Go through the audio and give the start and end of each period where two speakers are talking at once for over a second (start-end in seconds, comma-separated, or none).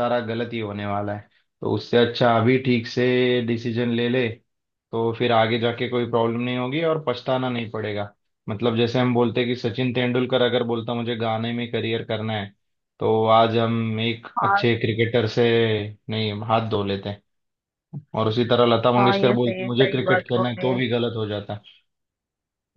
19.0-20.7